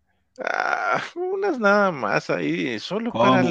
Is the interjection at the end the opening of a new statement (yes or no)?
yes